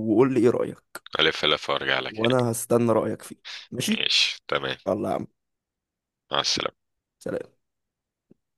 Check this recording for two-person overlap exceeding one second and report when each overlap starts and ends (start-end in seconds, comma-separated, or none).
none